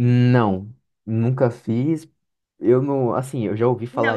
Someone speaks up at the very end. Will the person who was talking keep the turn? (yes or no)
no